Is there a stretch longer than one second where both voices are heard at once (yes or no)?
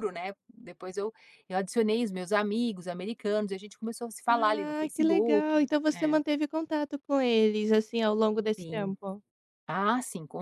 yes